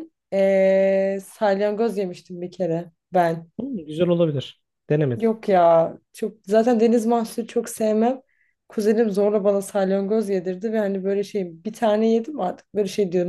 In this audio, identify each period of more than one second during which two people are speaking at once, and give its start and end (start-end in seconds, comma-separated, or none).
none